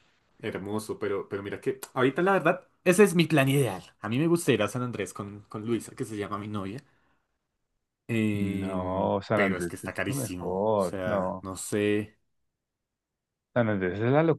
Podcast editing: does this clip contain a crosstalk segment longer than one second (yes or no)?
yes